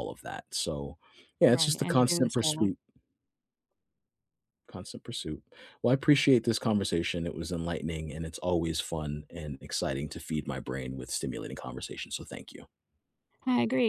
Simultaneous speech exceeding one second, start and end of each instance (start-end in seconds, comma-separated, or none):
1.5-2.7